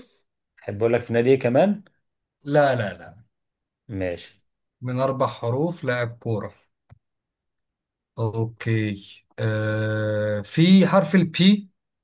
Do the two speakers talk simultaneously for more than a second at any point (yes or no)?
no